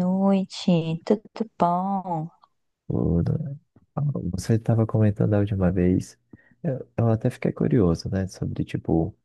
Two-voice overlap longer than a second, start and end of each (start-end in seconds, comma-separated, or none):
none